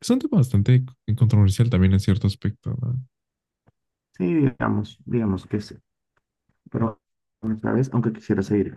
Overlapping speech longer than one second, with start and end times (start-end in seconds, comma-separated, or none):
none